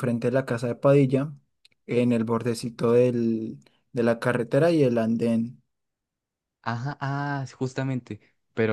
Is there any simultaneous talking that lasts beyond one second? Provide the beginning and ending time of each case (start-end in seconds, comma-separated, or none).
none